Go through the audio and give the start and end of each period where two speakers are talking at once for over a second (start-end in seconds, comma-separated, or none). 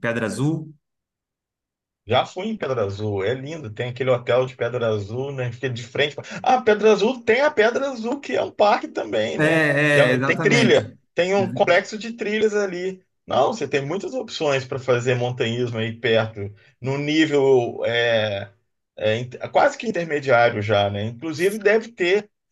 9.4-10.8